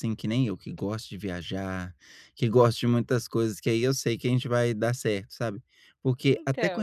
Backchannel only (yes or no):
yes